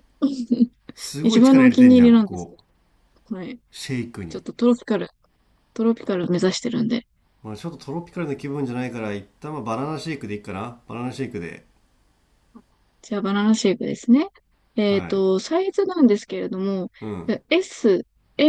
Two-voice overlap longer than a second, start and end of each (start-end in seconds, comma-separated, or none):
1.2-2.5